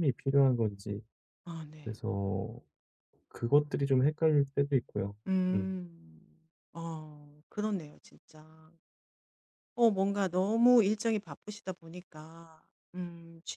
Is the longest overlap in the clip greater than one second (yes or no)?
no